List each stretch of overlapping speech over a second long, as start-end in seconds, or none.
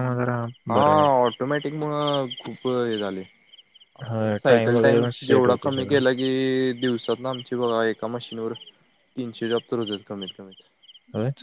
4.1-6.0